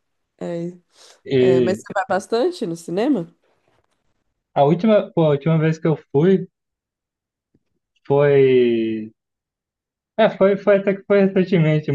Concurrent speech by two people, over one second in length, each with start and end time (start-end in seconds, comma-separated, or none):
none